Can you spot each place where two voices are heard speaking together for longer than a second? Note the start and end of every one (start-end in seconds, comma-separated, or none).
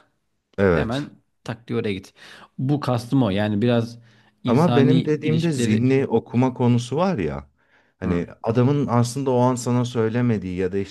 4.5-5.8